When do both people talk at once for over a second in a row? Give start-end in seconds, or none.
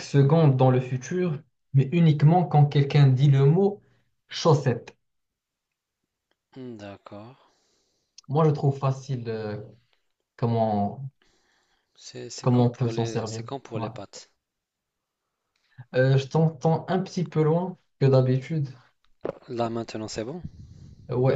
12.4-13.9